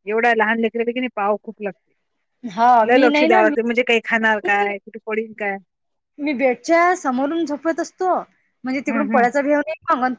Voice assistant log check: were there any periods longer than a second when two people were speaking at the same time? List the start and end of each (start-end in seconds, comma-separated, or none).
2.9-4.7